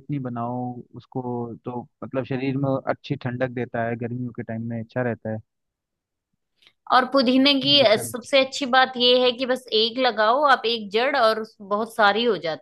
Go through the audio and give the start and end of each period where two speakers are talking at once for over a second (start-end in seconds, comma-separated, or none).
none